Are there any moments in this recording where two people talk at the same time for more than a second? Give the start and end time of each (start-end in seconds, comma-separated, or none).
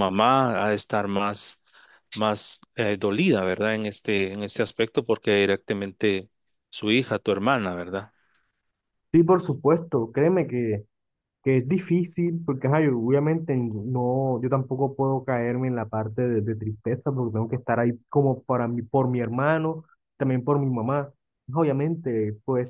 none